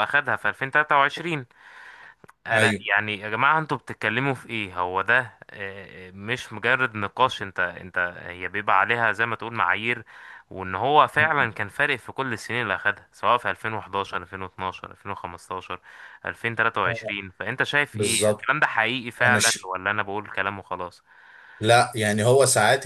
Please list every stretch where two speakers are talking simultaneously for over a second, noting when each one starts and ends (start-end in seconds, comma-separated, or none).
none